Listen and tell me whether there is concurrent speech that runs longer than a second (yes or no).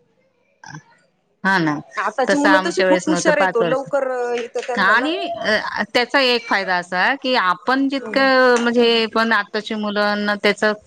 yes